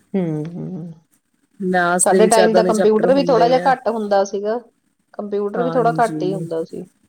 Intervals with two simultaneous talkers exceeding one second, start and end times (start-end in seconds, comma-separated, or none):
2.0-3.7